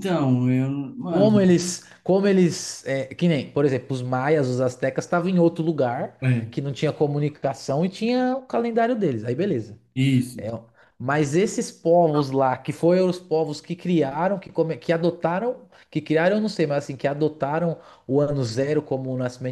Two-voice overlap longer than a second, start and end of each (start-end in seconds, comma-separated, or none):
none